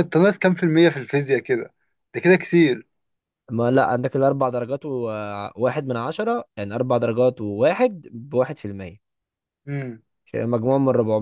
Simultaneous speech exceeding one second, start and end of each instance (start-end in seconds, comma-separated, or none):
none